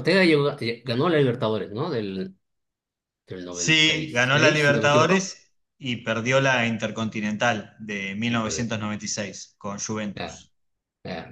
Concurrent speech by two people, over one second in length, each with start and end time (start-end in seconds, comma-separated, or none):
3.5-5.3